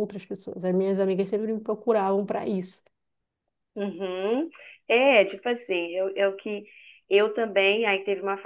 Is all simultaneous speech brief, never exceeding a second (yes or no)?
yes